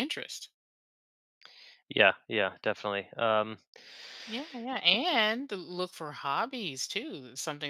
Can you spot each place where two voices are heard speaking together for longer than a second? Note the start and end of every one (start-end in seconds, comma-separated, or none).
none